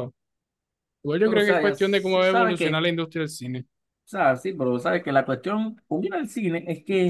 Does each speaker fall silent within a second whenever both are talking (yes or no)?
no